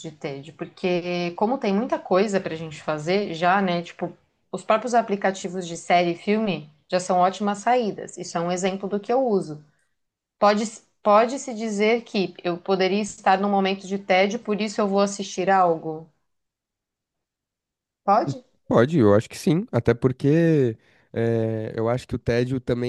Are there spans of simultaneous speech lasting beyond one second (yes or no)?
no